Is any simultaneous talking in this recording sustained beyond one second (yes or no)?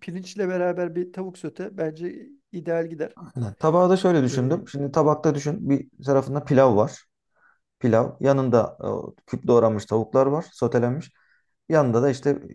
no